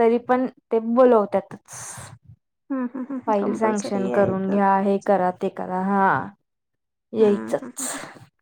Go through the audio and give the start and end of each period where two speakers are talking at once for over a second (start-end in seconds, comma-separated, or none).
3.3-4.6